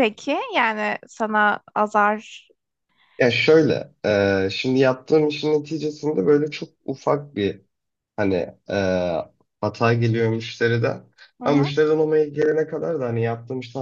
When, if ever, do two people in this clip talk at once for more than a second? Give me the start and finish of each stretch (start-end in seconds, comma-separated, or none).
none